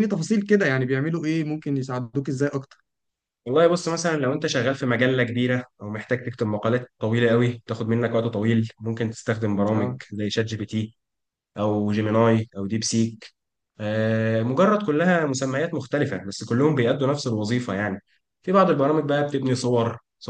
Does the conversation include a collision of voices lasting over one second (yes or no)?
no